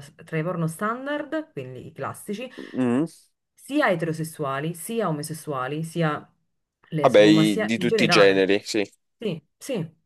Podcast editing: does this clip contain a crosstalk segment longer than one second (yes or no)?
yes